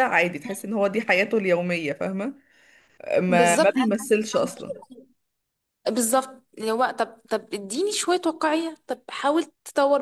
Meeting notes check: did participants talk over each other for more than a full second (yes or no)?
yes